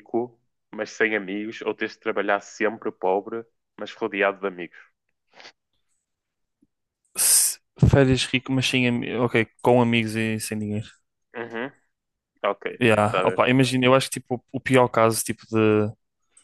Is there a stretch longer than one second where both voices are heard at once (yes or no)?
no